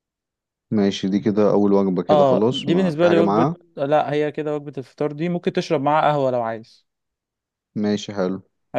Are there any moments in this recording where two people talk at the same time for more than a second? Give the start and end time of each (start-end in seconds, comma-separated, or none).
2.1-3.5